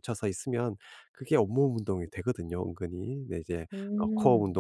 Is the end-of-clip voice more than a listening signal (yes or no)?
no